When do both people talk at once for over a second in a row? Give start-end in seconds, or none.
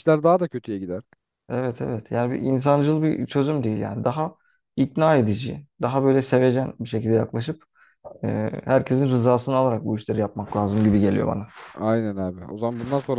none